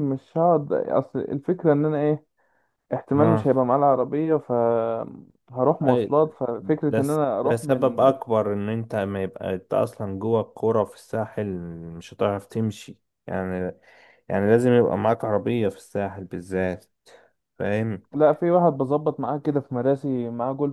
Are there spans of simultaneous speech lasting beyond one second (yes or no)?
yes